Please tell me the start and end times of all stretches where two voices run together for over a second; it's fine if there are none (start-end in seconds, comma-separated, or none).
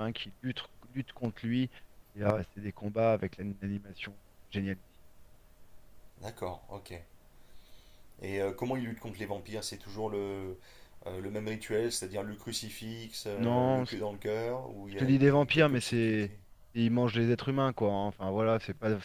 14.9-16.3